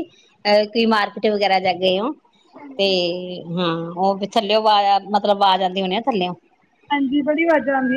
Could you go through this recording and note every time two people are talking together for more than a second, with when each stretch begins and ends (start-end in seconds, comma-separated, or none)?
none